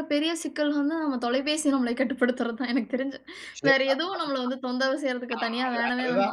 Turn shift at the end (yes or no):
yes